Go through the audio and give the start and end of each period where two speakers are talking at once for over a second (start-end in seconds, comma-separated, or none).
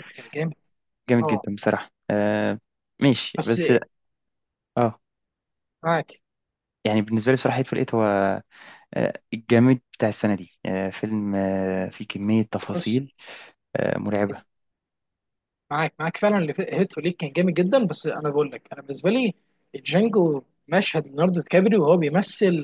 none